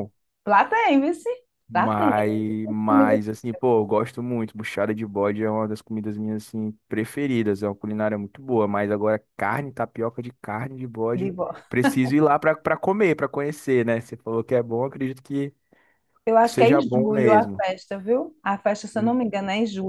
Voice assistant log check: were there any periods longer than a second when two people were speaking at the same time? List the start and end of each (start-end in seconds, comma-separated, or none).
16.4-17.6